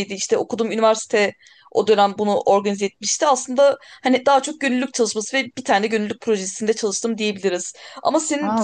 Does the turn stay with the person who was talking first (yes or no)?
yes